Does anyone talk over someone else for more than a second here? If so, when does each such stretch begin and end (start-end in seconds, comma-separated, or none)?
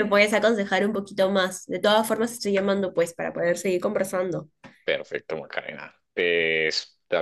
none